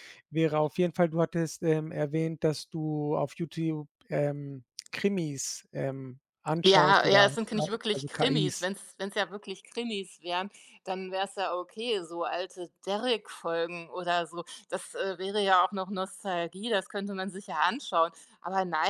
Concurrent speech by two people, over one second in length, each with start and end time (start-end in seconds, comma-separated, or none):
6.6-8.7